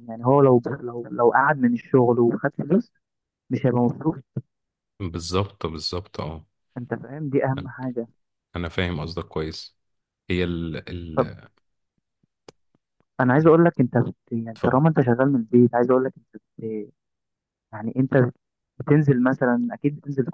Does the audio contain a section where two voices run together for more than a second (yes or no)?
no